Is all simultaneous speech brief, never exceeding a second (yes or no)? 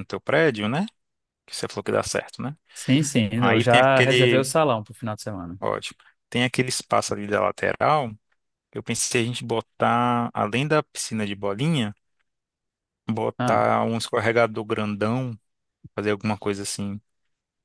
no